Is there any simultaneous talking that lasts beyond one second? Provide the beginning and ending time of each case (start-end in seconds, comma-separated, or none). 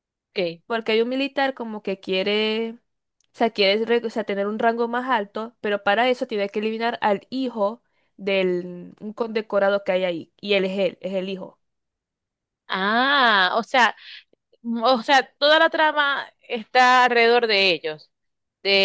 none